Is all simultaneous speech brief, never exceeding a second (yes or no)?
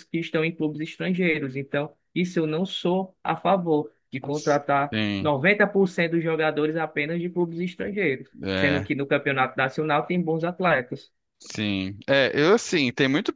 yes